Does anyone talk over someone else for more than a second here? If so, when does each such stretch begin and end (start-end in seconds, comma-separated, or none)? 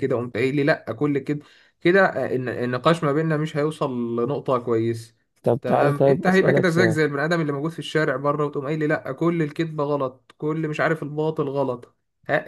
5.6-7.0